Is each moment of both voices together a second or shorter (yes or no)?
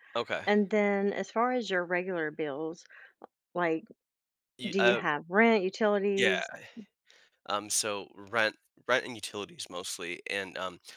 yes